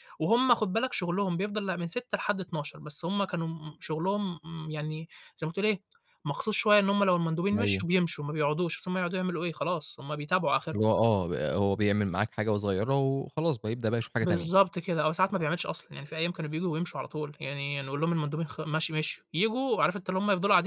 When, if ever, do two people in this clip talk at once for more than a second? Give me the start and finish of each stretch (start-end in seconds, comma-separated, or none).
none